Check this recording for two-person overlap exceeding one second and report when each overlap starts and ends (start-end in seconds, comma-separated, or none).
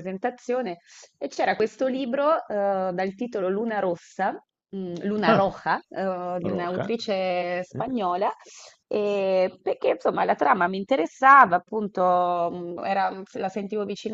6.4-7.9